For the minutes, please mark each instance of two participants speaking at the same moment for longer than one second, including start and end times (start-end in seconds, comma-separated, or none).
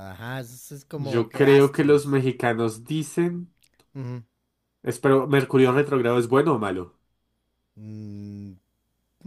0.9-2.2